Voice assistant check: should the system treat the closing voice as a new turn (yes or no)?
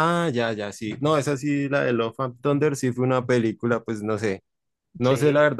no